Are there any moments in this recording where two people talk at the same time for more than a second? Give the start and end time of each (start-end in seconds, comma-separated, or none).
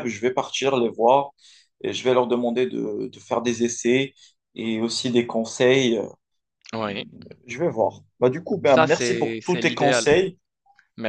8.6-10.1